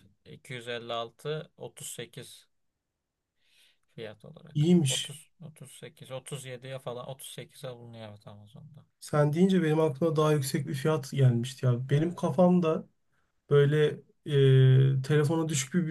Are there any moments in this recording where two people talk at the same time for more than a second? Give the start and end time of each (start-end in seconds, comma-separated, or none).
none